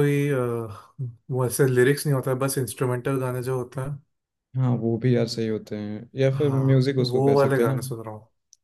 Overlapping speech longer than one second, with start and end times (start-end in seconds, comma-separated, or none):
6.3-7.8